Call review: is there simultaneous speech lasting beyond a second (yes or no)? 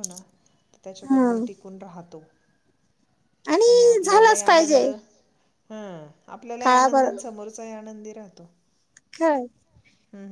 yes